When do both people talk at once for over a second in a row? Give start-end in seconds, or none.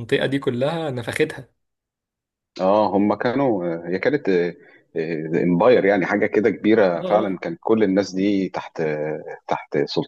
none